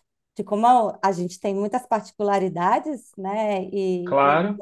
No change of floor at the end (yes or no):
yes